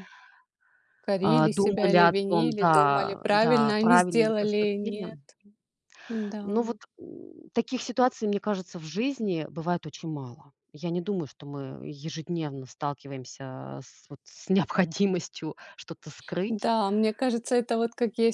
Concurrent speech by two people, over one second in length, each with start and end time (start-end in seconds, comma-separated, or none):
1.2-5.1